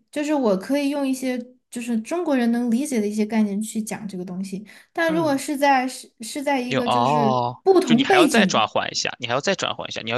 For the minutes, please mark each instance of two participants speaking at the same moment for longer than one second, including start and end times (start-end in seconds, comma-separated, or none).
6.7-8.7